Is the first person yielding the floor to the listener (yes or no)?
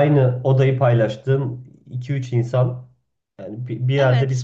no